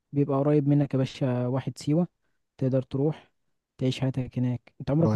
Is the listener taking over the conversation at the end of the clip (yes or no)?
yes